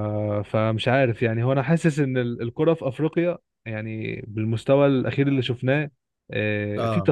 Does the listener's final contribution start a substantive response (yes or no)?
no